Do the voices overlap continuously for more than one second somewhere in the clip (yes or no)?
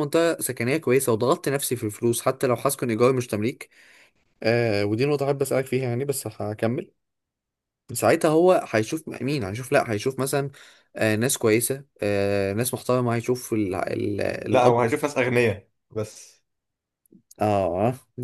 no